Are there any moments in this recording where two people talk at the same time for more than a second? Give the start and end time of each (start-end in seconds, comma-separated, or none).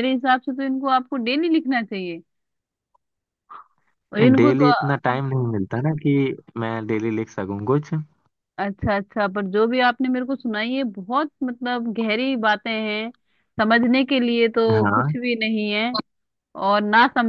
none